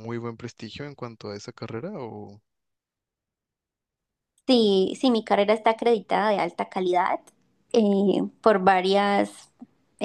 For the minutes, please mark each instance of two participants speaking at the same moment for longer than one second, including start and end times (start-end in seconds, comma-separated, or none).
none